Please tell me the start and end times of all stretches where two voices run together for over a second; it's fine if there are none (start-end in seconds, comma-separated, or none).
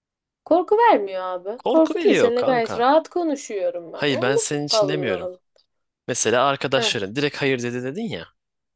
1.6-2.9, 3.9-5.3